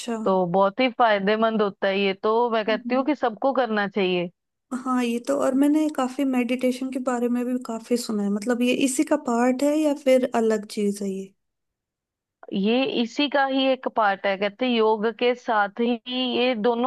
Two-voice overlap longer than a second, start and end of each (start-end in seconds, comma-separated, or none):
none